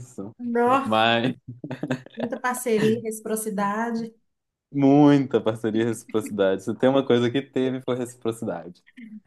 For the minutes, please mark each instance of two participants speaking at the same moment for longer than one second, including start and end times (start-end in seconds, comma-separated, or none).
none